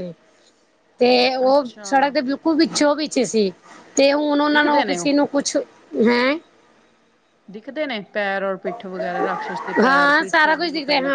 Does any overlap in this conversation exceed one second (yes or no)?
no